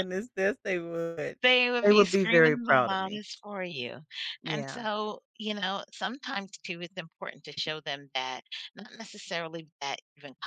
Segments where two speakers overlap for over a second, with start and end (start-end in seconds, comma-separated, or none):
1.8-3.2